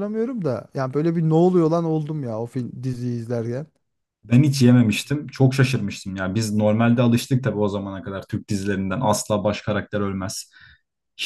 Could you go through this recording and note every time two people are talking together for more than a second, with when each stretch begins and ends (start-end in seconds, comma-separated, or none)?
none